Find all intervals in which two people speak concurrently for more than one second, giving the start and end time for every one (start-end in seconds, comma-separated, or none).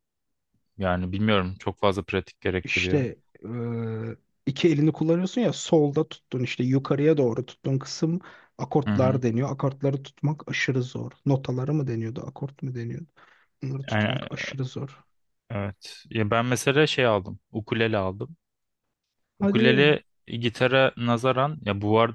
none